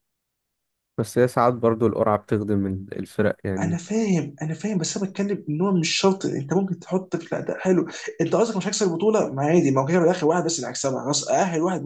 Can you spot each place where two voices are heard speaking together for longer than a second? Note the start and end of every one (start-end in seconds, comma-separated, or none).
none